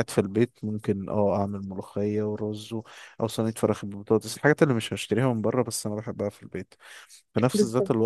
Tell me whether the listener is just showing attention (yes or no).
yes